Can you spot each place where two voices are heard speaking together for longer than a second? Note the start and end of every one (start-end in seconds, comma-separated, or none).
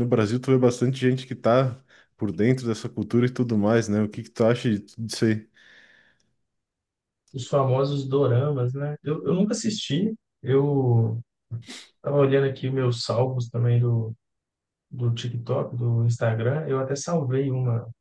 none